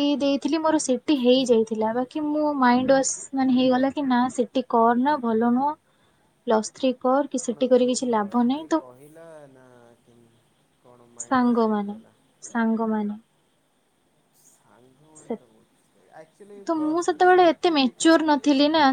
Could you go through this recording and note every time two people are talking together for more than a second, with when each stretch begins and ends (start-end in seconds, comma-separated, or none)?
16.7-18.2